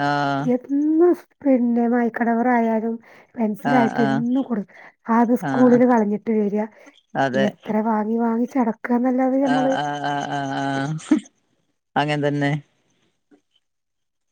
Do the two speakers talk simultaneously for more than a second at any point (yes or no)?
no